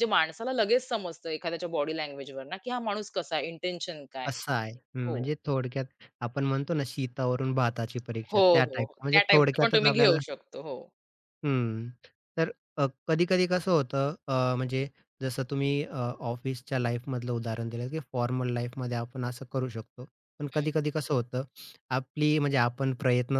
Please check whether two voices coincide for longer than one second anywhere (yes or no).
yes